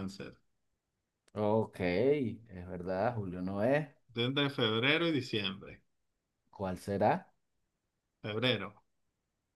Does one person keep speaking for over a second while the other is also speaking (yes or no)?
no